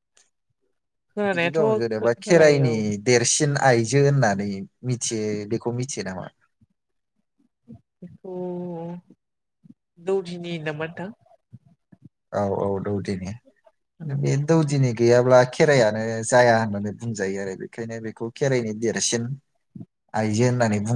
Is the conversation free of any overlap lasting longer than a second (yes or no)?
no